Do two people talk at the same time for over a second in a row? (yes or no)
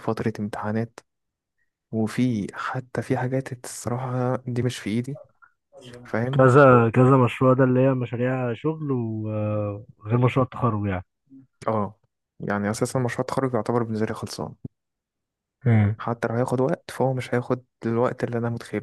no